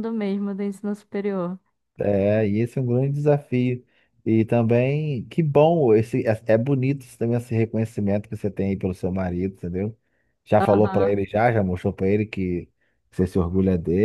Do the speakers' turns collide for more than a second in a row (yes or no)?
no